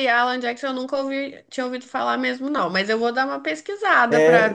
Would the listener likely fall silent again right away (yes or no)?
no